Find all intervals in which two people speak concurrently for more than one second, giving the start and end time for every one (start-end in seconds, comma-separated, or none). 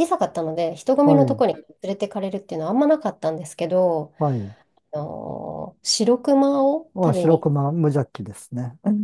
none